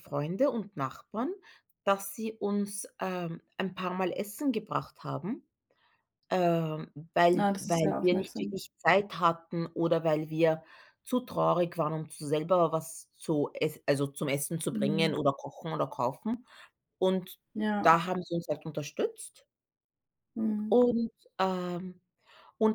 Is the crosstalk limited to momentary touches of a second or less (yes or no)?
no